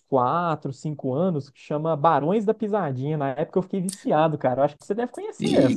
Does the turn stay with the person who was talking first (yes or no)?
no